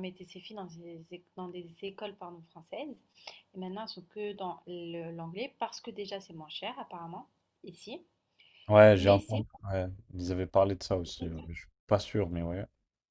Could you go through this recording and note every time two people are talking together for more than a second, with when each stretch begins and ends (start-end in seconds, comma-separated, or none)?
none